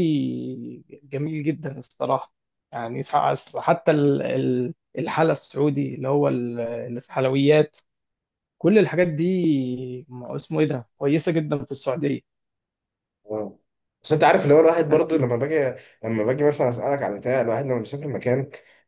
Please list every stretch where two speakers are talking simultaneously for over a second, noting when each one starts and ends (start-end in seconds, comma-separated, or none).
none